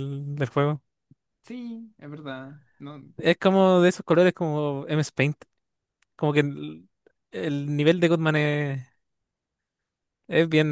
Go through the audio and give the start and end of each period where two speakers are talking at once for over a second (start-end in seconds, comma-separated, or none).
none